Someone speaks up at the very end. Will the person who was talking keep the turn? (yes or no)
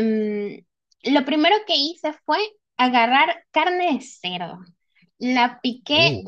yes